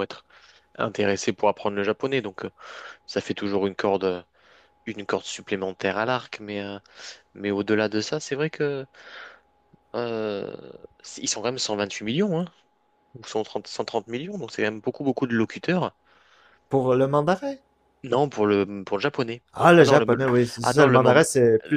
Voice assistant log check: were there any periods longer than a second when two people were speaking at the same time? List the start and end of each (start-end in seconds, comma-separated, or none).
19.5-21.2